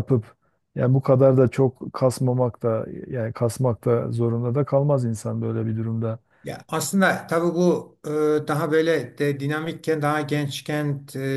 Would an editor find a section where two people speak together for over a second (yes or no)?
no